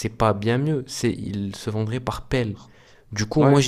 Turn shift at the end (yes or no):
no